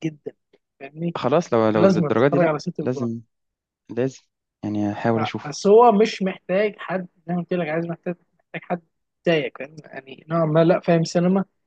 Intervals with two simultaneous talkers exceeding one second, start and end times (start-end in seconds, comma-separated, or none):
1.8-3.1